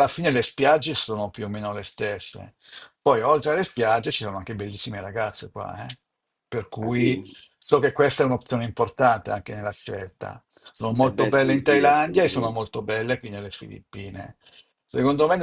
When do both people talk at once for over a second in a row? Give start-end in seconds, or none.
11.0-12.6